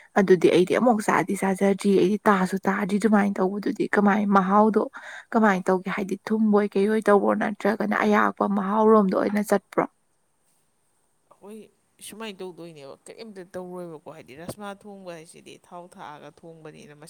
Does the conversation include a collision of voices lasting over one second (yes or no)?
no